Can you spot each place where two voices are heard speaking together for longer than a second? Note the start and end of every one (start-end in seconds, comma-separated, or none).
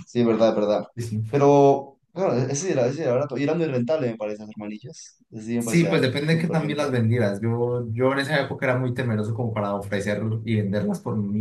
5.6-7.0